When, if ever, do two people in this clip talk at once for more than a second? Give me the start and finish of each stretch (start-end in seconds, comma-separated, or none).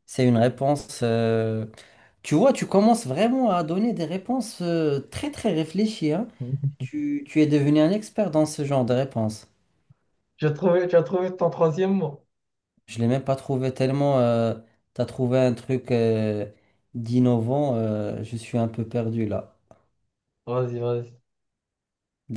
none